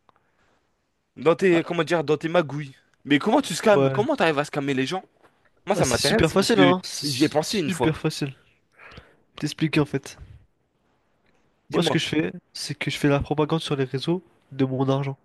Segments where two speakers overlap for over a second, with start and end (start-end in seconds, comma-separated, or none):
5.7-7.9